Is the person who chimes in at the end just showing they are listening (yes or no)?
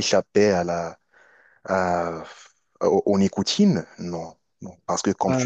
yes